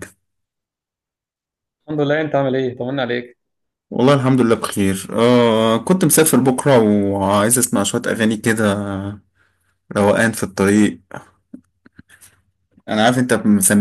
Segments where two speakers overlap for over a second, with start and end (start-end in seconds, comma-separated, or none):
none